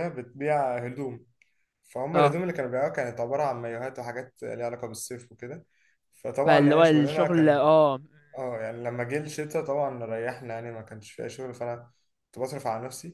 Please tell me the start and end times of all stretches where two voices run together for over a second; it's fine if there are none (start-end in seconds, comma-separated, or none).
6.5-7.7